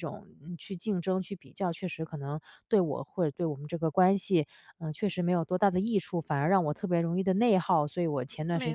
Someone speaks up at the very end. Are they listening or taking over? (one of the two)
listening